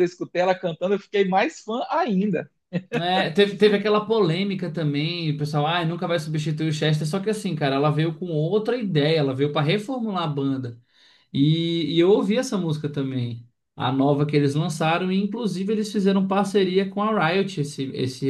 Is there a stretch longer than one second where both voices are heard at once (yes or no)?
no